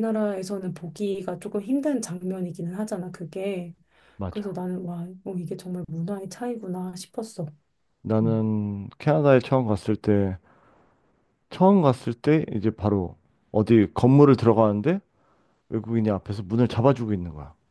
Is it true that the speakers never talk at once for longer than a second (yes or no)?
yes